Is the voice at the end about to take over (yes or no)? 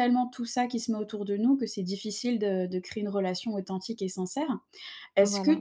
no